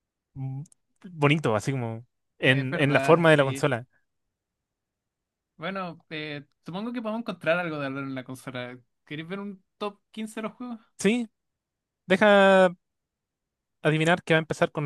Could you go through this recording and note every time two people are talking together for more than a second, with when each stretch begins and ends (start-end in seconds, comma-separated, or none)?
2.4-3.6